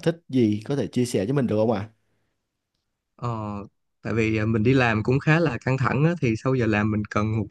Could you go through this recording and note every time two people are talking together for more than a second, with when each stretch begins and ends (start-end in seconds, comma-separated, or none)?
none